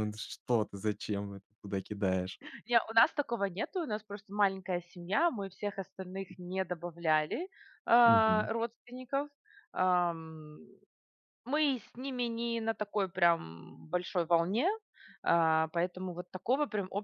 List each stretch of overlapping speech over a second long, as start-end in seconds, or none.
none